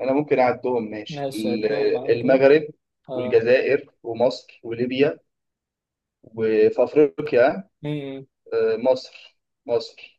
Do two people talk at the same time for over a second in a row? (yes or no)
yes